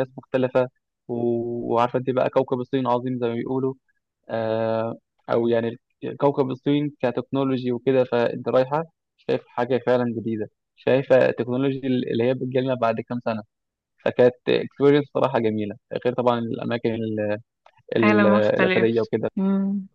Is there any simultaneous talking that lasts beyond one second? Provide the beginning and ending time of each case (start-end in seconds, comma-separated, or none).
18.0-19.3